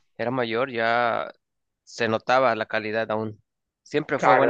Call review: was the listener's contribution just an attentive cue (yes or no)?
no